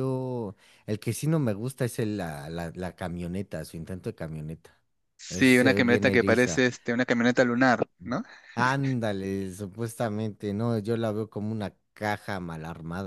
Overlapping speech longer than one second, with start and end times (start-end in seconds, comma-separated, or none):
5.3-6.6